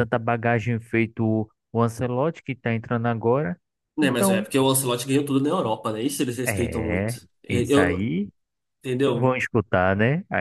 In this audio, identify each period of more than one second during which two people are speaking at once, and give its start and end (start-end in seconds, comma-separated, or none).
6.5-8.1